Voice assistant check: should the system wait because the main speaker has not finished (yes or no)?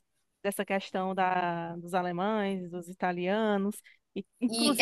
no